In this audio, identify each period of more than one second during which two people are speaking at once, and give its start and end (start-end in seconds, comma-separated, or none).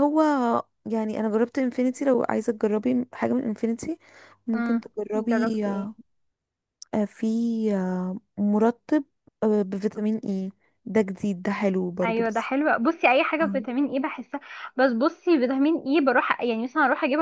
4.5-6.0